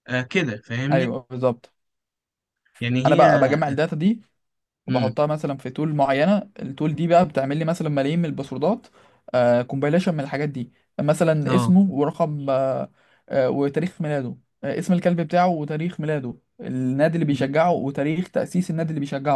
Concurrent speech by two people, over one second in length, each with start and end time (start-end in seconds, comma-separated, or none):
none